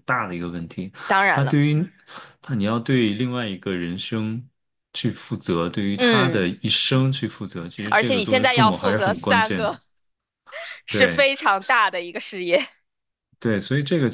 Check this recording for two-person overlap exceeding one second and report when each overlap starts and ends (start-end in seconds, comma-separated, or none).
7.9-9.7